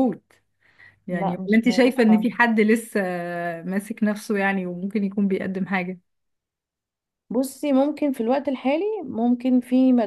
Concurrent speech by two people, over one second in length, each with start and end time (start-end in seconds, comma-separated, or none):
1.1-2.3